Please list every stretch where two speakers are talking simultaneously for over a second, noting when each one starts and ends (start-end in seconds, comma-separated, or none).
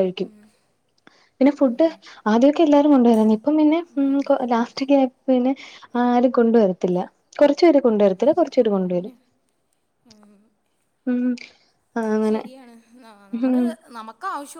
none